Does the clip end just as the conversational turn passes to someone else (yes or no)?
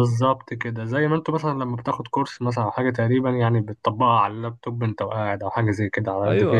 yes